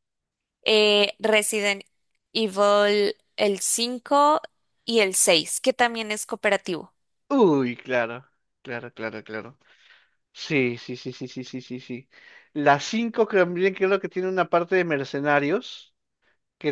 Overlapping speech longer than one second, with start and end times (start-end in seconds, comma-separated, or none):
none